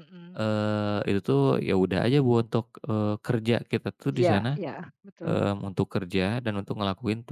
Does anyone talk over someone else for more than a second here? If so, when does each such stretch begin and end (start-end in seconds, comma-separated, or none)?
none